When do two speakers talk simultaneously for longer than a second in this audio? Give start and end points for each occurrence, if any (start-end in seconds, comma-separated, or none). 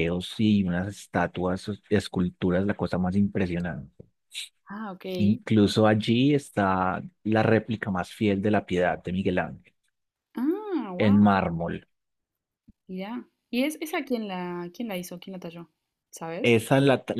none